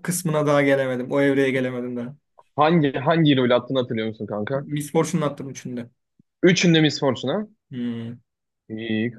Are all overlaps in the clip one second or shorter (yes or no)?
yes